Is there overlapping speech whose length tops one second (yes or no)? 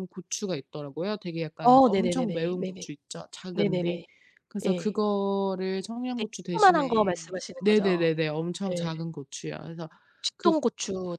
yes